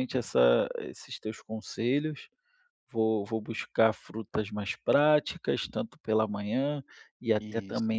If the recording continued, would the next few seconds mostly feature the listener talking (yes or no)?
no